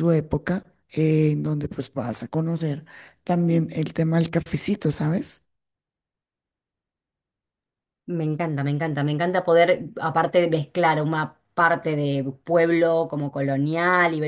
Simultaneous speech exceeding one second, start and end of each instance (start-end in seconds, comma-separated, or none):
none